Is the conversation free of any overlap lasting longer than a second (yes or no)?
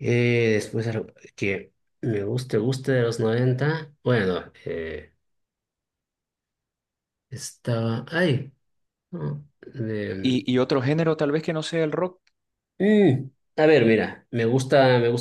yes